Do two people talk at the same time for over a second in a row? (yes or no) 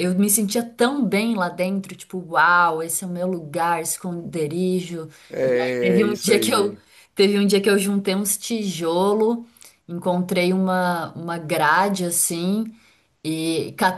yes